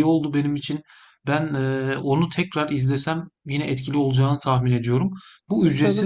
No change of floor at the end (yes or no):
no